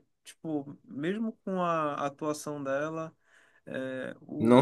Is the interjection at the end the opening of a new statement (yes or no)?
no